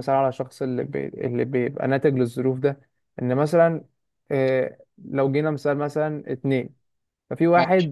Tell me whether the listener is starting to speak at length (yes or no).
no